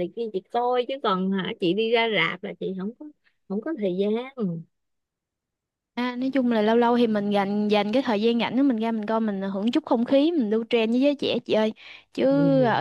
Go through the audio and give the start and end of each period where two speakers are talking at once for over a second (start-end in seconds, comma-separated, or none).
none